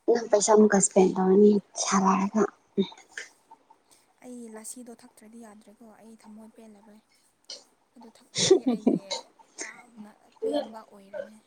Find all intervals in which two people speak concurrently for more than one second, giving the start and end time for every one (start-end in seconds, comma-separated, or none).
none